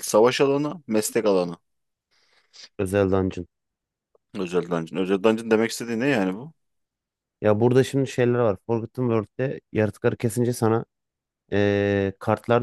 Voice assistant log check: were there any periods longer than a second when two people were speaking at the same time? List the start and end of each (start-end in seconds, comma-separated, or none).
none